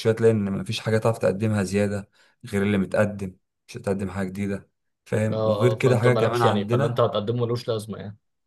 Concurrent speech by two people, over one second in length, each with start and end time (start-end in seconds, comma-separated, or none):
5.3-7.0